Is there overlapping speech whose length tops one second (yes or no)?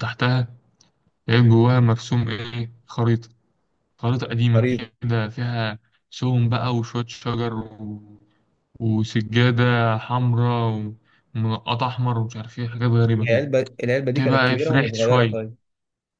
yes